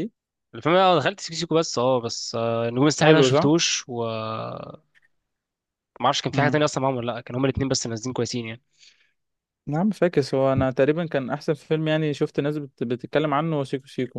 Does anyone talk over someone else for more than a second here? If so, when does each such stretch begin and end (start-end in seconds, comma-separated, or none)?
none